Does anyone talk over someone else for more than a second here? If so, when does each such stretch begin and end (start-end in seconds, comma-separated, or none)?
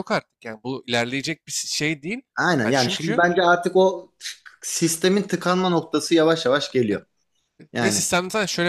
none